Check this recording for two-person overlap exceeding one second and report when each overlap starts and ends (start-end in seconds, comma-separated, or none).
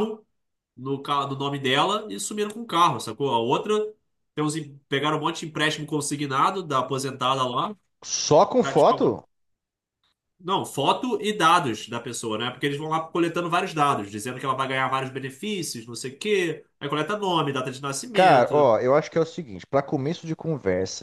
none